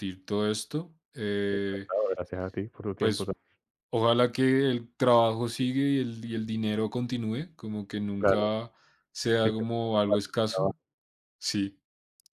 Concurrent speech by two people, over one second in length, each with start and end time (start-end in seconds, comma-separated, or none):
9.4-10.7